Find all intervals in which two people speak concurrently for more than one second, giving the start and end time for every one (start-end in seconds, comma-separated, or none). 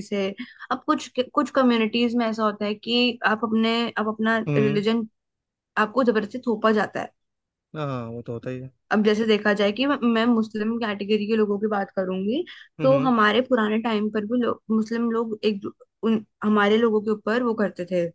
none